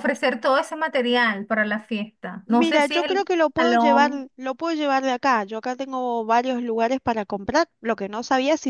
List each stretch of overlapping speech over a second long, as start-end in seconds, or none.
2.5-4.3